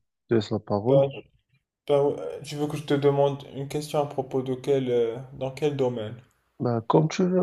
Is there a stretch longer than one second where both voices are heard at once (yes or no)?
no